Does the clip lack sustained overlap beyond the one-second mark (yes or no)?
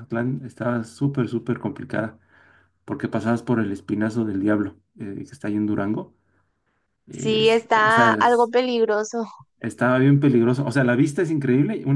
no